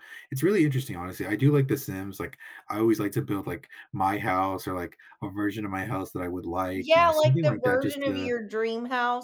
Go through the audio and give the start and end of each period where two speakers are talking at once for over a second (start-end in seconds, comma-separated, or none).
6.8-8.3